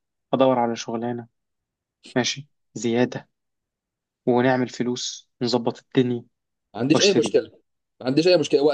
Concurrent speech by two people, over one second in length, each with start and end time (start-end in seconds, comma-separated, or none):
none